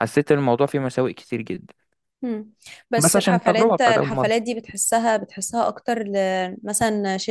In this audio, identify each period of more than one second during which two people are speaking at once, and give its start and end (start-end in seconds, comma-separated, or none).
3.0-4.4